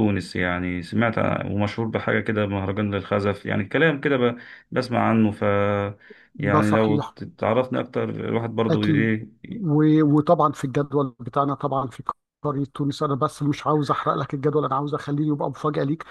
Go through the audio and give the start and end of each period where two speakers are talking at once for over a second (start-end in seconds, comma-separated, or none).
none